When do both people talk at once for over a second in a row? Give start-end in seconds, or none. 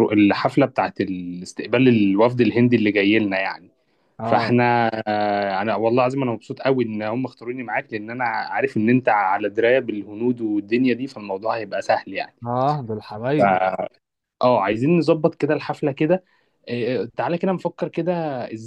none